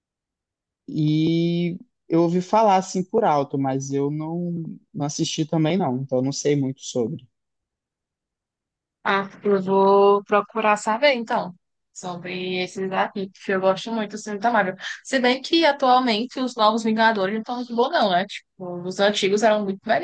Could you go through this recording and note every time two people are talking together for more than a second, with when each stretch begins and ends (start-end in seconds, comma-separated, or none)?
none